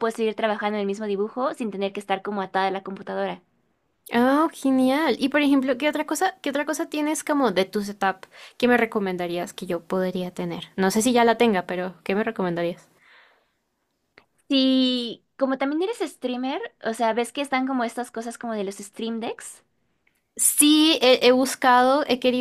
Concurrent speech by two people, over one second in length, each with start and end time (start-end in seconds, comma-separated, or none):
none